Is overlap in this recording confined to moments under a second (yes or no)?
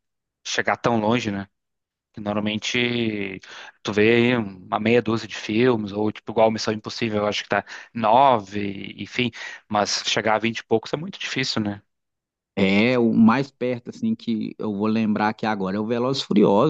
yes